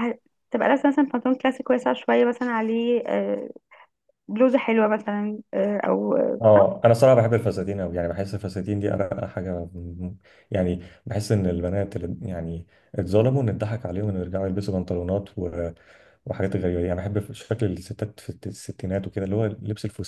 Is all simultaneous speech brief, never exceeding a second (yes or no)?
yes